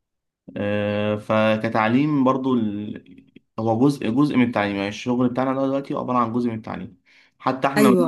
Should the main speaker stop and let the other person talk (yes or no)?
no